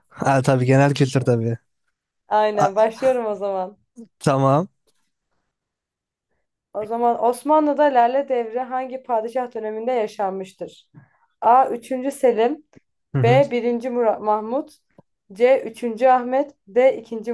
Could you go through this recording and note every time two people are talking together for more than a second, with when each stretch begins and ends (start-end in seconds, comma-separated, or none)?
none